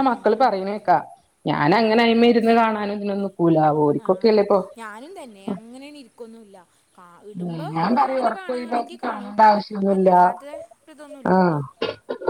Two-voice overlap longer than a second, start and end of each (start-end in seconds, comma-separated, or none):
8.1-9.3